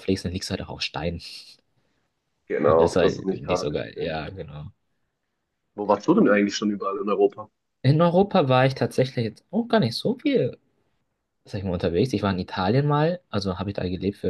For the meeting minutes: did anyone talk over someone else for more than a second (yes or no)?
yes